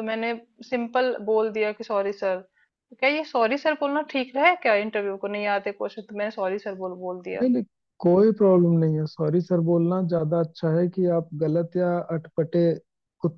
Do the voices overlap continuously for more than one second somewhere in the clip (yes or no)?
no